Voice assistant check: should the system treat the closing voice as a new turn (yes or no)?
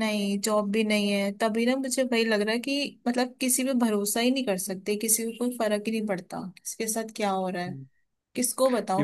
yes